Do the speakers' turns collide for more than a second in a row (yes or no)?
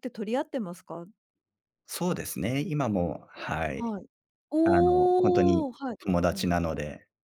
yes